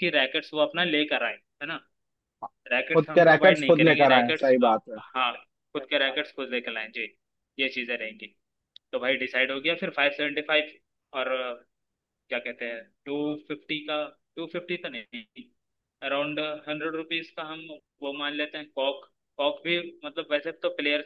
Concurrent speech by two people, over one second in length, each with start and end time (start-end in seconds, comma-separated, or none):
2.9-5.0